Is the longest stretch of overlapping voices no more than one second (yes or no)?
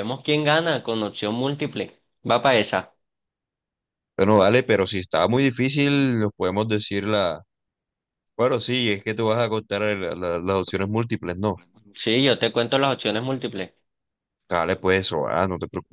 yes